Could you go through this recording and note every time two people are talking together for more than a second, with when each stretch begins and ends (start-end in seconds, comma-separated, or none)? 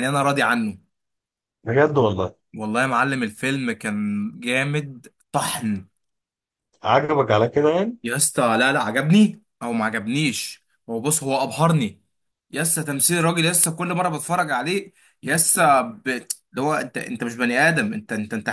none